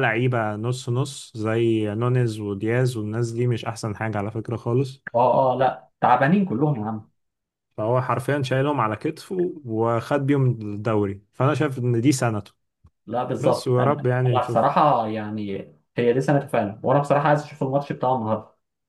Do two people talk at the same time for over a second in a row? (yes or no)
yes